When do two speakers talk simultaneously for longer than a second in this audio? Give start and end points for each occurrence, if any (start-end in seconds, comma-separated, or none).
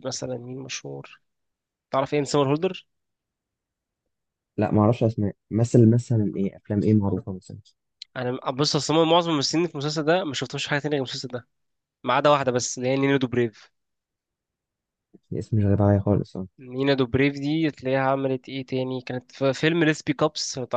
none